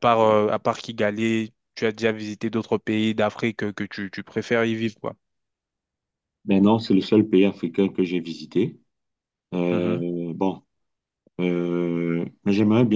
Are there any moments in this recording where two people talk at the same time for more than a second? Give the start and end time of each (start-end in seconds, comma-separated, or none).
none